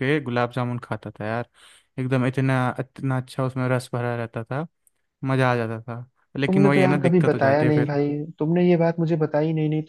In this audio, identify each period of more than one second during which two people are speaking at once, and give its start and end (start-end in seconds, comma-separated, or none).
6.5-7.9